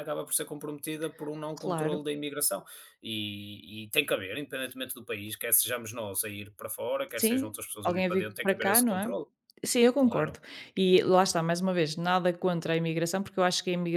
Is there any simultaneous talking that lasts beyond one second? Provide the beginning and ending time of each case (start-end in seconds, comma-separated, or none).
7.2-9.1